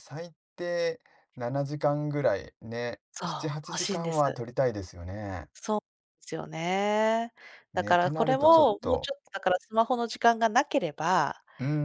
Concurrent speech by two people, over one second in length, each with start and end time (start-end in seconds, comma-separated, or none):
7.7-9.1